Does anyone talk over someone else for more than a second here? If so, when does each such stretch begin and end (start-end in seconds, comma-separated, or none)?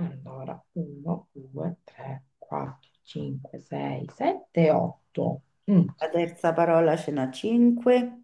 none